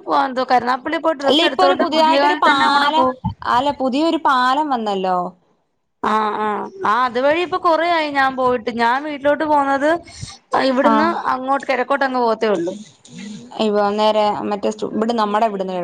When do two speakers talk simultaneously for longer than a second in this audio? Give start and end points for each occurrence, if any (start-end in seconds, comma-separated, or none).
1.3-3.1